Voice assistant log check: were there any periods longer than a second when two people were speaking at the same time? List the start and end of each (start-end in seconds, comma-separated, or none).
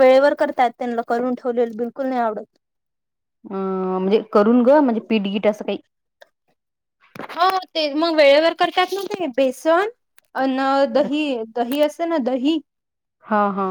none